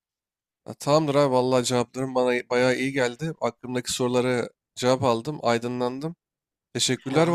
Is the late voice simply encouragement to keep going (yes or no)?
yes